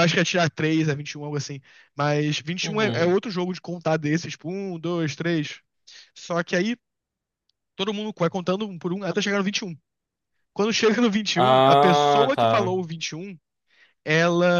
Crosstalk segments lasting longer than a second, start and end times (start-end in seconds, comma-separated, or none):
11.3-12.7